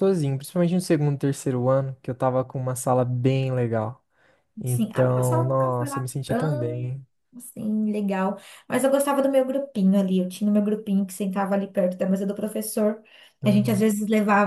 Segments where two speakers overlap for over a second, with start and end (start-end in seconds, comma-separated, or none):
4.7-6.1